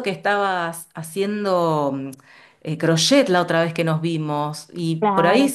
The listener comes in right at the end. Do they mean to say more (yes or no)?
no